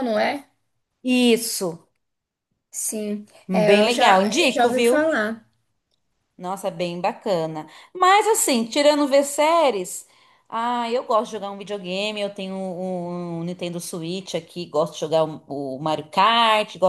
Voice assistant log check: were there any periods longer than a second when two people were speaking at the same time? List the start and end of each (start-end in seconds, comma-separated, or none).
3.5-5.1